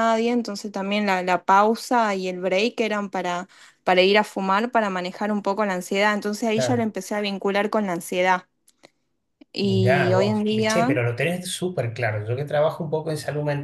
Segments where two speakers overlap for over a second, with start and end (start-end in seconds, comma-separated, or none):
9.6-10.9